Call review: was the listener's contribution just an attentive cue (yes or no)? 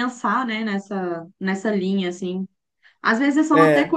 yes